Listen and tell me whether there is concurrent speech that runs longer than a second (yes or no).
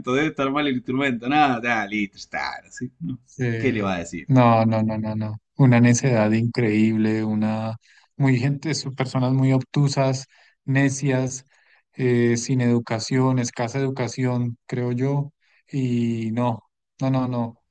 no